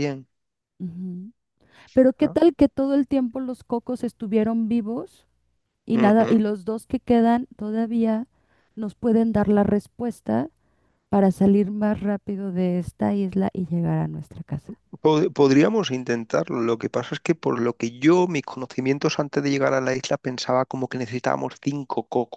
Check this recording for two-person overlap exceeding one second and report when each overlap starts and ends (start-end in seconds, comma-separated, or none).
none